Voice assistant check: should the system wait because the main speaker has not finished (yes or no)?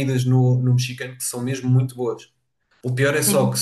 yes